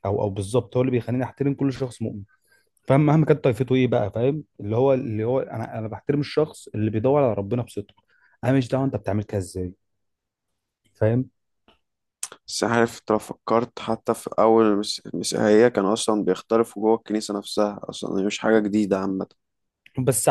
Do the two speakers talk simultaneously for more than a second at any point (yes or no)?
no